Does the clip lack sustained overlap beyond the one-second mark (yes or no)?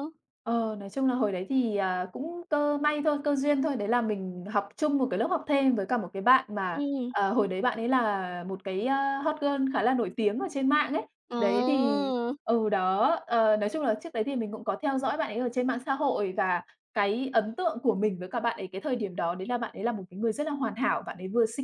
yes